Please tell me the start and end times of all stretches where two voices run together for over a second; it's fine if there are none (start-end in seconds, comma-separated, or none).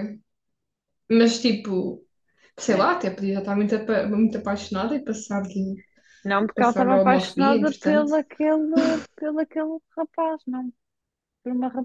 6.5-8.1